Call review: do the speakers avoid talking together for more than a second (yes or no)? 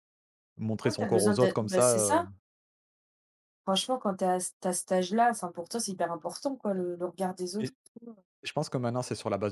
no